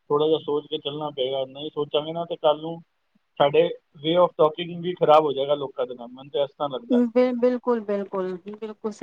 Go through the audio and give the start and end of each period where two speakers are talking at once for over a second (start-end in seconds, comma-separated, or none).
none